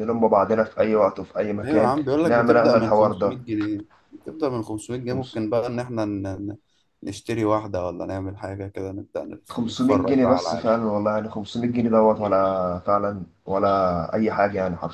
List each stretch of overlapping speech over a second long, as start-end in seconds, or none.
1.6-3.4, 9.5-10.7